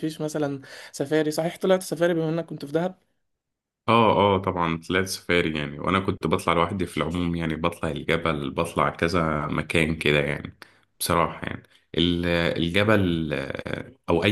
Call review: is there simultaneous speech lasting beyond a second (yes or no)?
no